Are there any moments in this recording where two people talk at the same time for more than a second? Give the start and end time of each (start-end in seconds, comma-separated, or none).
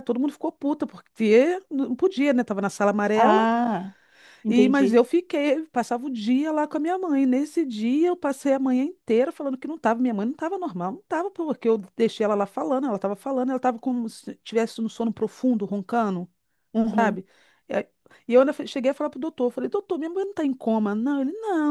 none